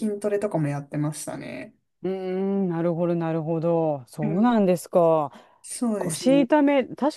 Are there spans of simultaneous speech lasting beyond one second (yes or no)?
no